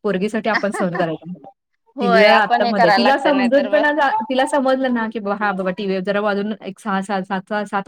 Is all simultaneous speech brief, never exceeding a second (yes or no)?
no